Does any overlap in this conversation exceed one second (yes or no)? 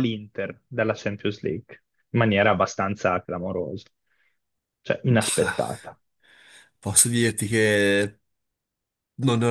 no